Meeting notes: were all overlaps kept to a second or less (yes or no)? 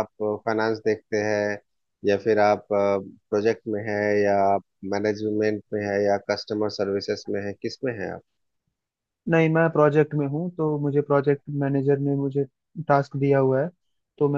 yes